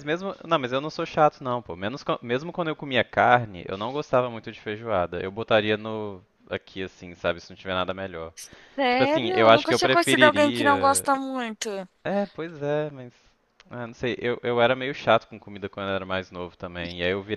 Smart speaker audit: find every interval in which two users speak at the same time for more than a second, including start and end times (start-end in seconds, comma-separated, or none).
8.9-11.1